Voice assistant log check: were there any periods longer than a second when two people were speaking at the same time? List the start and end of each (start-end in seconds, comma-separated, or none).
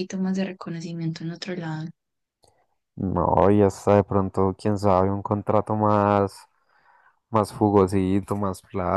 none